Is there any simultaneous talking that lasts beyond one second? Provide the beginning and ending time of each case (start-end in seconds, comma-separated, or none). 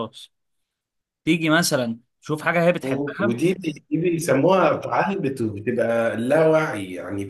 none